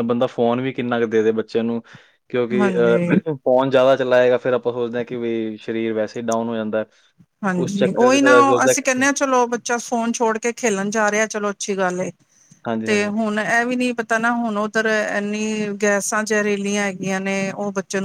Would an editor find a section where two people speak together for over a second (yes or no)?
no